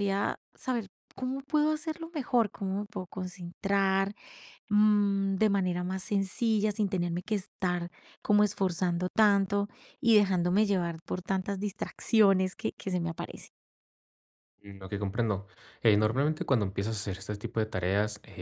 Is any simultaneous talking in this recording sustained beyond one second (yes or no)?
no